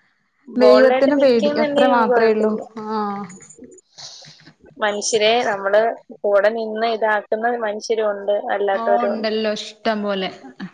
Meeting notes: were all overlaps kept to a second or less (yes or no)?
no